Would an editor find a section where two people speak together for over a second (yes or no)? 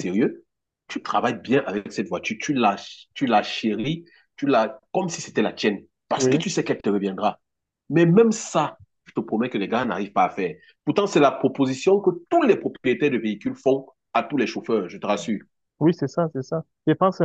no